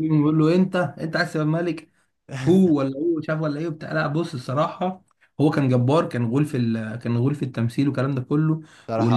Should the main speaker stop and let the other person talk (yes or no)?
no